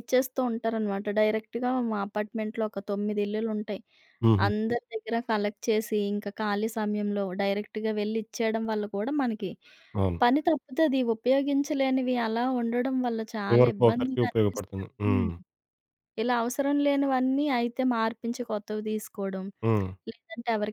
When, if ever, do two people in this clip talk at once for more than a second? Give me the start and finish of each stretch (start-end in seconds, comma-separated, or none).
13.5-15.3